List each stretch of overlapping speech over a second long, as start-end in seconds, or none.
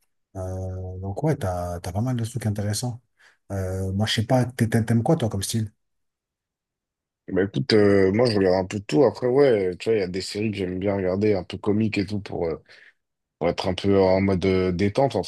none